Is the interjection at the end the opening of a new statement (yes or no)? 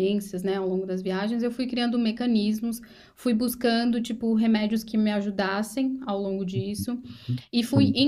no